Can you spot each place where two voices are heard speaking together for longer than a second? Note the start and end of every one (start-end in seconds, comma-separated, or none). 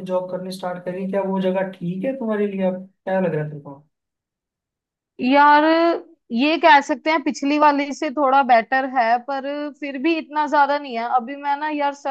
none